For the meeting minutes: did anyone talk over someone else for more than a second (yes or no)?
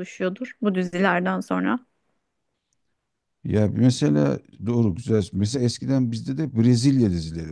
no